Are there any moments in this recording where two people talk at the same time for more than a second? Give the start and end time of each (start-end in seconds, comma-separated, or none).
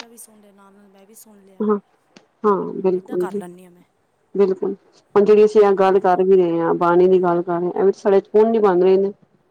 none